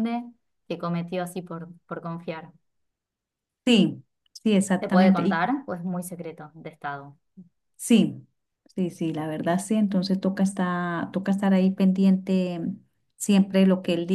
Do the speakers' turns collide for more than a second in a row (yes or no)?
no